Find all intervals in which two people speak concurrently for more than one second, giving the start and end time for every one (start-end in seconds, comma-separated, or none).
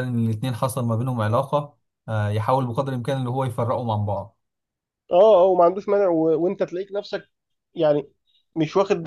none